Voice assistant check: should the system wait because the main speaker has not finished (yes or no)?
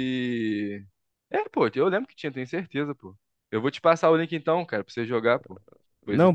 no